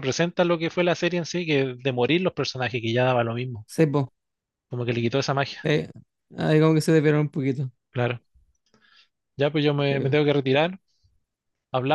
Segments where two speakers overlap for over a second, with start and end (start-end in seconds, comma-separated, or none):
none